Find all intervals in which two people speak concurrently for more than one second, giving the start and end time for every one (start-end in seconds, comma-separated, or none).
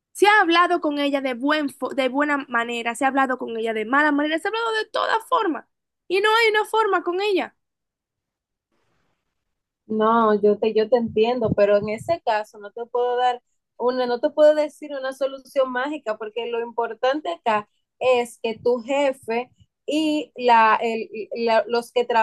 none